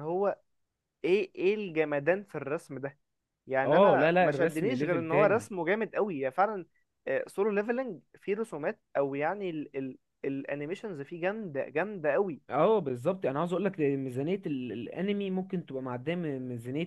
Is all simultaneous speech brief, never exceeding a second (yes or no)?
no